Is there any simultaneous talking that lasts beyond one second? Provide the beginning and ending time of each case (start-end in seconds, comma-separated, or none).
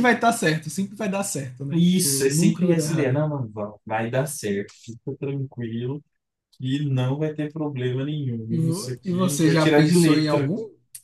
1.7-3.2, 8.5-10.5